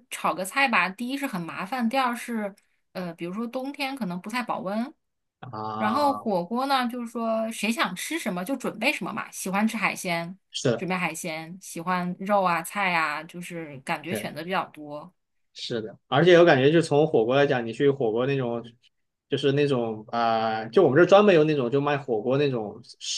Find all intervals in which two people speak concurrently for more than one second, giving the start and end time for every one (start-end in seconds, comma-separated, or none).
none